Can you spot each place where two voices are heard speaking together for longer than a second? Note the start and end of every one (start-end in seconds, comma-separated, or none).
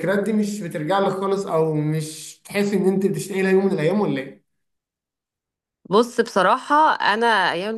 none